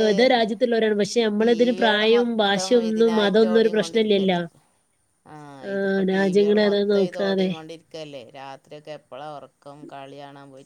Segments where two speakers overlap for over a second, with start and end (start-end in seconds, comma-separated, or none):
1.4-4.4